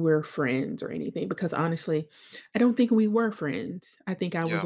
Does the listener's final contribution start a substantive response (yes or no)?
no